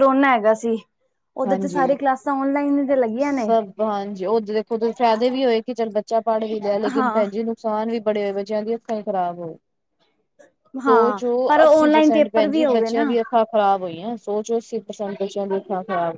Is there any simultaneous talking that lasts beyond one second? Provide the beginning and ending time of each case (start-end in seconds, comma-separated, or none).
10.9-13.1